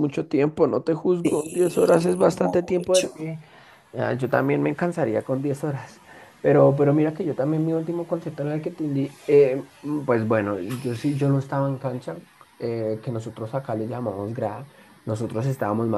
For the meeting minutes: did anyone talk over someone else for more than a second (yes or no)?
yes